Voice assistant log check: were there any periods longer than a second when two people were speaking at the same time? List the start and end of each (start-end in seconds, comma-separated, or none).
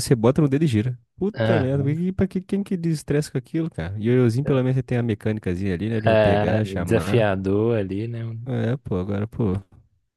6.1-7.3